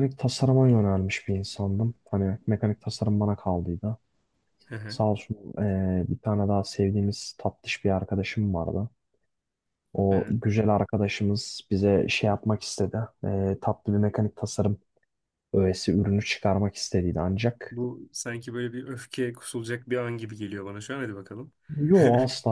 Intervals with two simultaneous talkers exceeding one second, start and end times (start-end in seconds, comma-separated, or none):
none